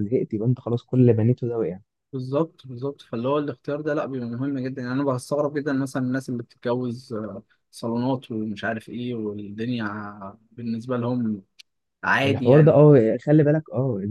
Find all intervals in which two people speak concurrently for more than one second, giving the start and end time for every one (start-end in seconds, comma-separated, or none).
none